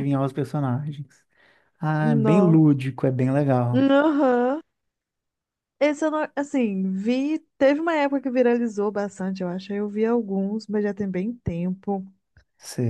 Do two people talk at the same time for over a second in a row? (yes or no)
no